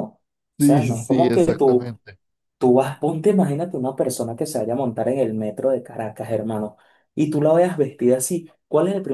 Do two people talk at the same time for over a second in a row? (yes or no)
yes